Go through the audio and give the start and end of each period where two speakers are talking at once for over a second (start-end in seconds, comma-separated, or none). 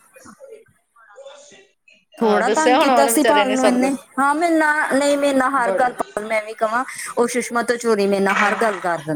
2.2-3.9